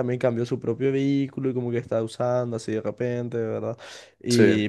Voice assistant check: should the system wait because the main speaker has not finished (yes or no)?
yes